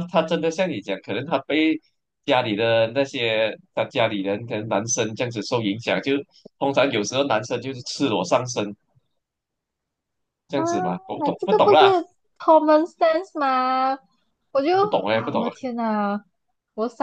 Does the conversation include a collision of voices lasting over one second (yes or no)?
yes